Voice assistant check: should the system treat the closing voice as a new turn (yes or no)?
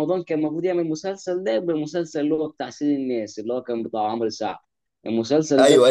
yes